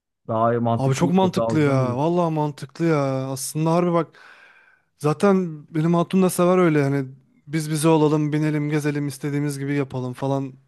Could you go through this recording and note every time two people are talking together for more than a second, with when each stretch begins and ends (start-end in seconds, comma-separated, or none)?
0.7-2.0